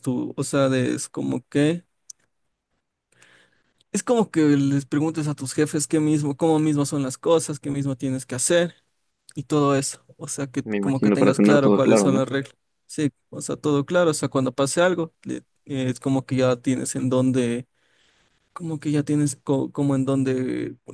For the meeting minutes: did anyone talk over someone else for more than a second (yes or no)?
yes